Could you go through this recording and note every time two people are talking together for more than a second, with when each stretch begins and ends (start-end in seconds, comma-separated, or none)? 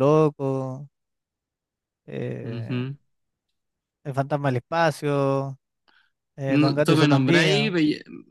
6.5-7.7